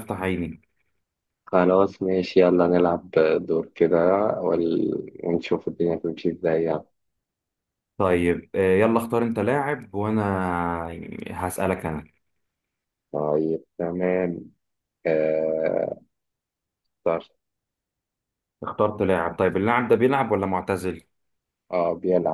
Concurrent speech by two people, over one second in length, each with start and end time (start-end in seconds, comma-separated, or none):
none